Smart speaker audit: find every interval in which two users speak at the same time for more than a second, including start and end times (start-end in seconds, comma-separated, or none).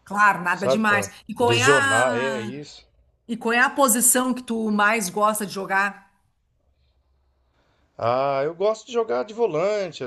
0.5-2.5